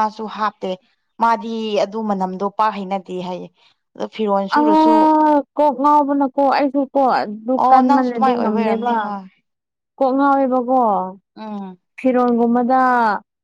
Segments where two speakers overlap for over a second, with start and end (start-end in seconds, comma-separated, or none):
7.6-8.9